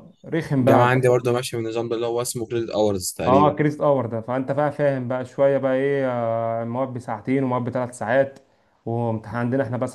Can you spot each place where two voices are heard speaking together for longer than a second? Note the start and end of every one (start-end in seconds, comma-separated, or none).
none